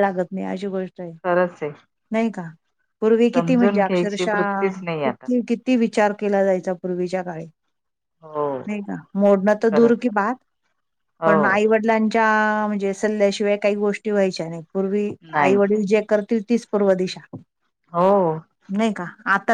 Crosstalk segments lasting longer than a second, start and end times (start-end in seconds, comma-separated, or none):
3.3-5.3